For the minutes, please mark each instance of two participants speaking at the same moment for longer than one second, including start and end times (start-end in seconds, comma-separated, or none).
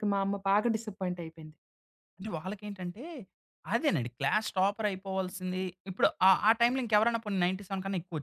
none